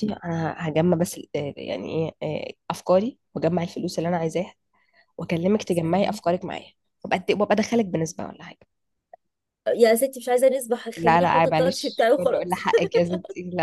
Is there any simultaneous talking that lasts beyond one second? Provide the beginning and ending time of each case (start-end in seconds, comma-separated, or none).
11.0-12.5